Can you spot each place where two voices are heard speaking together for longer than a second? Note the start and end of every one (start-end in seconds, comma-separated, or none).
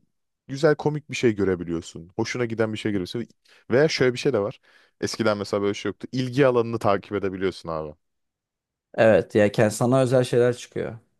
none